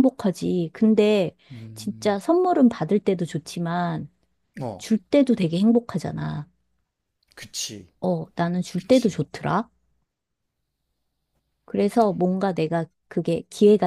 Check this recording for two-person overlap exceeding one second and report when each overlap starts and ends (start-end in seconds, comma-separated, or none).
none